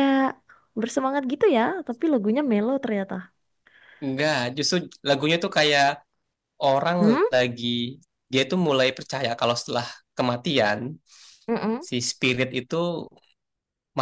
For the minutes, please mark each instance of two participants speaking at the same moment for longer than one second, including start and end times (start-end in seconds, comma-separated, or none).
none